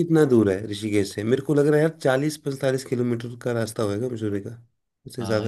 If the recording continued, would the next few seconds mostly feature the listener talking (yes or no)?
yes